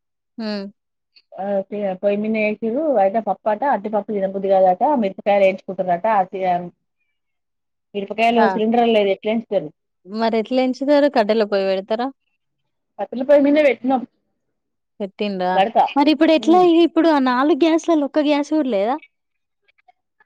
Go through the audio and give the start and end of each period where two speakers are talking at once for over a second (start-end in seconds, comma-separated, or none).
none